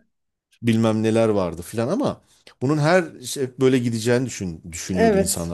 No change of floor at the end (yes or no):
yes